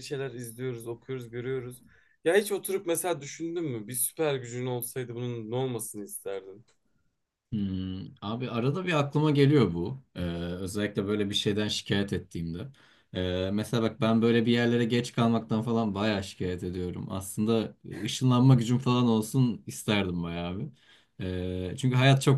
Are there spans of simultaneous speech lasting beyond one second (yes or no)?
no